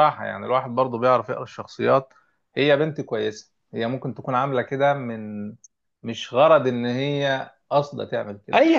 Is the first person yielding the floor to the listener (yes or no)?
yes